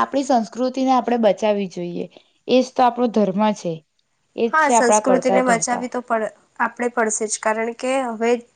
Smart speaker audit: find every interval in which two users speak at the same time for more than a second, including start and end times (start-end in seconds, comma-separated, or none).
4.5-5.9